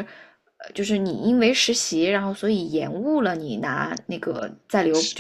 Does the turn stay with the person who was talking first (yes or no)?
no